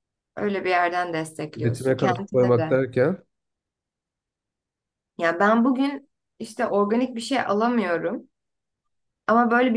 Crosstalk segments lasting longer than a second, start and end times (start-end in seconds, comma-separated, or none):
1.6-2.8